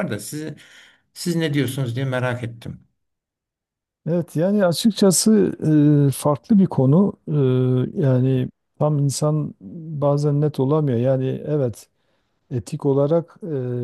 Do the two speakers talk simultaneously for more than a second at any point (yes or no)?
no